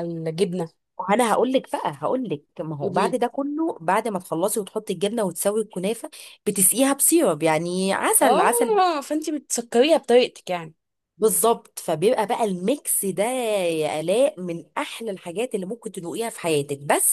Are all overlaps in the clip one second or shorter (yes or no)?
yes